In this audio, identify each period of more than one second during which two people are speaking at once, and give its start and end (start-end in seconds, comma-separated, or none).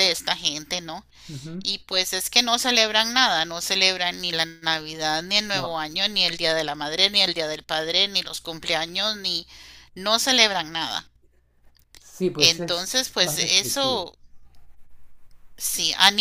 12.4-14.1